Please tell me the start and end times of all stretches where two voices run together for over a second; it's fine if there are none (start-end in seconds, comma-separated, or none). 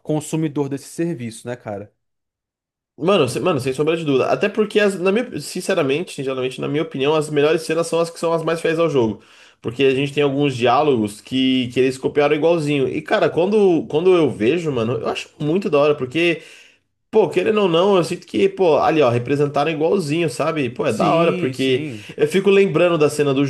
20.9-22.1